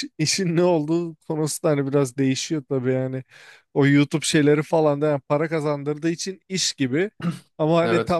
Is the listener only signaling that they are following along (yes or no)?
yes